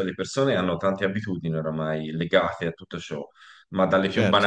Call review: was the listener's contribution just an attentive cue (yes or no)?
no